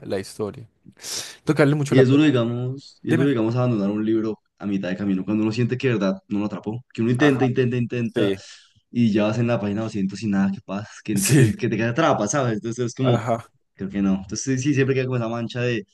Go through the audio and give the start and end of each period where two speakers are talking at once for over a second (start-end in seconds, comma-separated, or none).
none